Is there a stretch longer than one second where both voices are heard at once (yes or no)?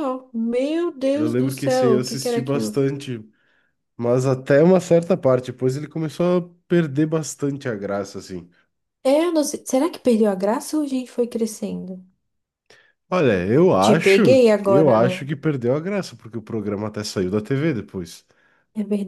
yes